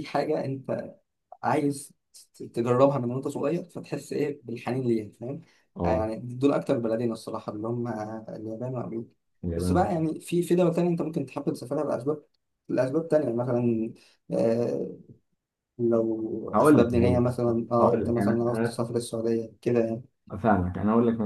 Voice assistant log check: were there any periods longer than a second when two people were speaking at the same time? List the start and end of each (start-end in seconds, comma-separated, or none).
16.5-18.8